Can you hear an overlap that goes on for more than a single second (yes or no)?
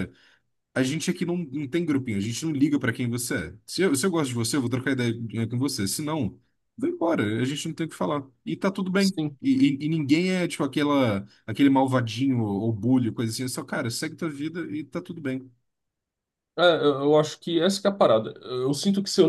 no